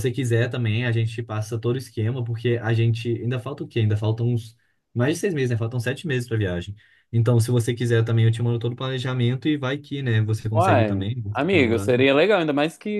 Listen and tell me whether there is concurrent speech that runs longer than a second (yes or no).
yes